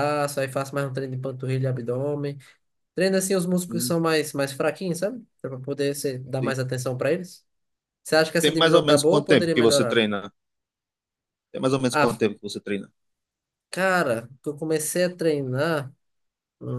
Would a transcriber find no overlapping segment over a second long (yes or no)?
no